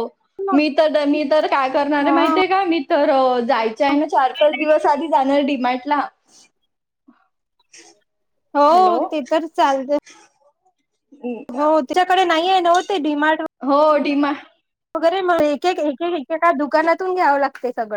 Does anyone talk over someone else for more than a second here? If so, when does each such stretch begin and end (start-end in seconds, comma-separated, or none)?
none